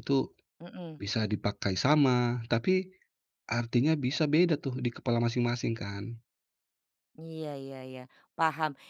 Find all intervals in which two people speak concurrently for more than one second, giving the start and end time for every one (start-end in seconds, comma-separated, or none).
none